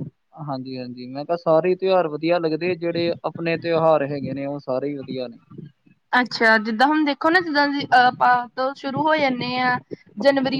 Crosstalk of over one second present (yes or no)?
no